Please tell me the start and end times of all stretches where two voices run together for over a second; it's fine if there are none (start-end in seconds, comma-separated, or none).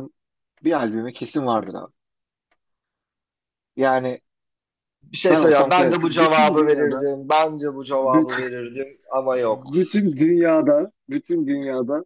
5.3-7.0